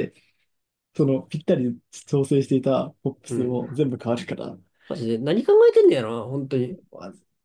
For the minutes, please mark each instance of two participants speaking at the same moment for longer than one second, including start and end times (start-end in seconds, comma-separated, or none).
none